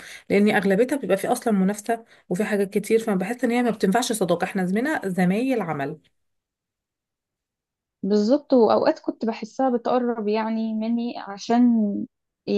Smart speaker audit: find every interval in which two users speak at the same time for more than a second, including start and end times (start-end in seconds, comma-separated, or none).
none